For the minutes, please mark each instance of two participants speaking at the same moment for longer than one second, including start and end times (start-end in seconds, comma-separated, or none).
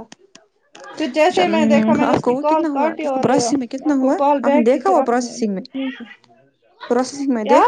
1.3-5.3